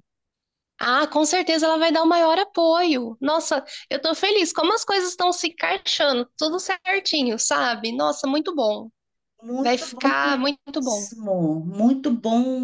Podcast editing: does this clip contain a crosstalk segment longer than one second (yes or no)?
yes